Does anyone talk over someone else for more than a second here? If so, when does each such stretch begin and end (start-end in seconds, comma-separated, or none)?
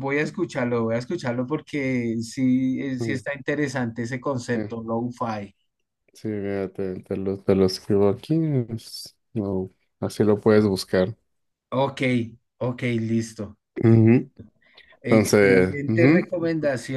15.1-16.3